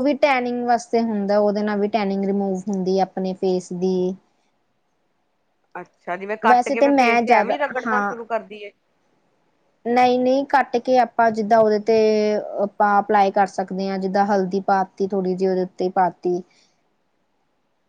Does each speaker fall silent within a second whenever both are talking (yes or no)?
no